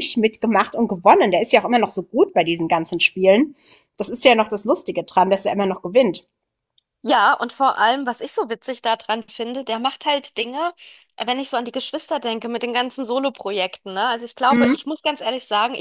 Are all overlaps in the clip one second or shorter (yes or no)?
yes